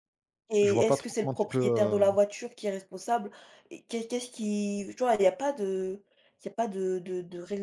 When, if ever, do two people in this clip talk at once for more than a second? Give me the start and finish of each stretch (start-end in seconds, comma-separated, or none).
0.6-2.1